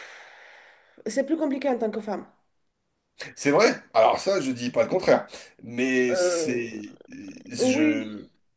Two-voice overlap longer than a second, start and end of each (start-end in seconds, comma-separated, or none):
none